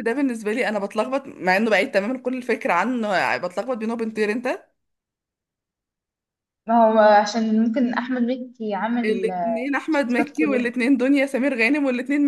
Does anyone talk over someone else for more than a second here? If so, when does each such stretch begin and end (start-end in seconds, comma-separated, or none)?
9.1-10.7